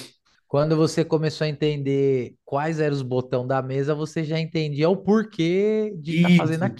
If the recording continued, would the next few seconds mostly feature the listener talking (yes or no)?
yes